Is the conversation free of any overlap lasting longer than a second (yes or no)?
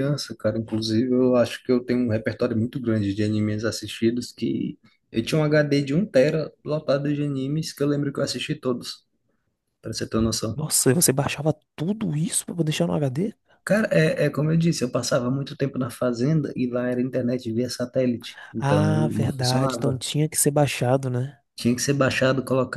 no